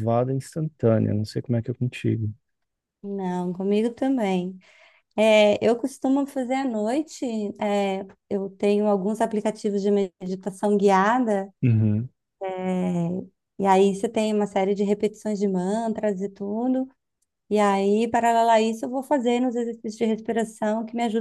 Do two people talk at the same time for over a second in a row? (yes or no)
no